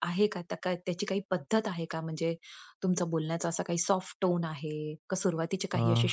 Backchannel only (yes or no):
yes